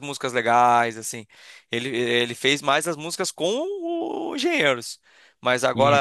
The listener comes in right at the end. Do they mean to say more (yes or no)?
no